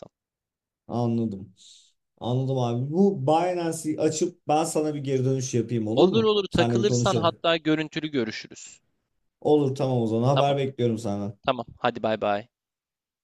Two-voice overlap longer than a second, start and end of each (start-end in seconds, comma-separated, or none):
6.0-7.4